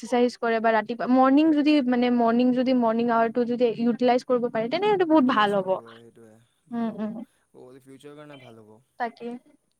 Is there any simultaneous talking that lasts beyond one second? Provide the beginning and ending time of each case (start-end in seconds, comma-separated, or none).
none